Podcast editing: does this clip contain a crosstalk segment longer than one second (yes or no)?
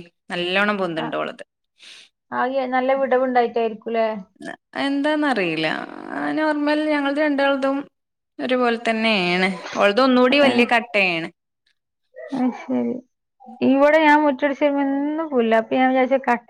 no